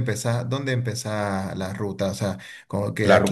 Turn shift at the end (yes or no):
yes